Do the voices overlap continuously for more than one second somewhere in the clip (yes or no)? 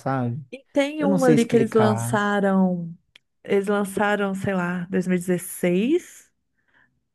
yes